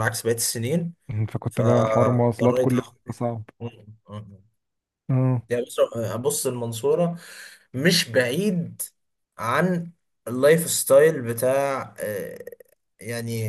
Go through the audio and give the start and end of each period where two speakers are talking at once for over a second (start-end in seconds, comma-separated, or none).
1.5-2.9